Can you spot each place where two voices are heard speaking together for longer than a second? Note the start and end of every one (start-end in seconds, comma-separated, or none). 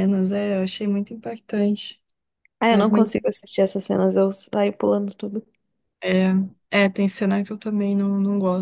none